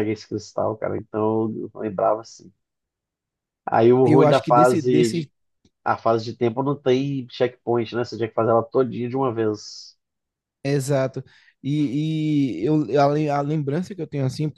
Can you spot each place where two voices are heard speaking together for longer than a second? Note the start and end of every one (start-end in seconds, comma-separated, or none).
4.0-5.3